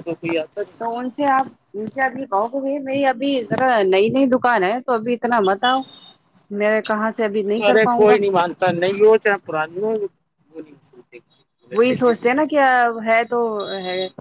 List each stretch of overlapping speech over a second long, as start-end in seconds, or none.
none